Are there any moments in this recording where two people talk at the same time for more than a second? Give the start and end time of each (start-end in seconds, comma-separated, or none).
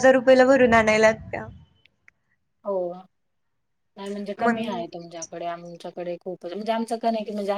none